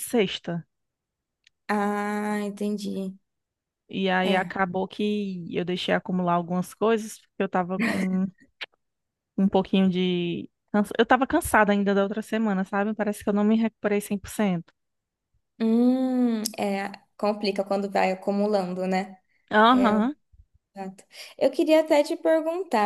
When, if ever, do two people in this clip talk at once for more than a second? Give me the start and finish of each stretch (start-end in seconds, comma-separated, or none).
none